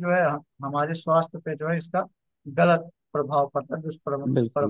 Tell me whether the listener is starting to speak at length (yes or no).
yes